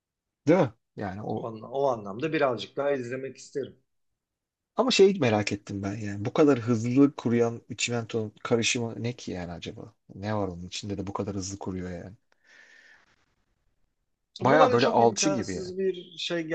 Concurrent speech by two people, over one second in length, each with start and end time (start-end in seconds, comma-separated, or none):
14.4-15.7